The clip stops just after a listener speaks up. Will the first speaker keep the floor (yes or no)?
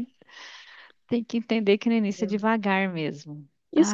no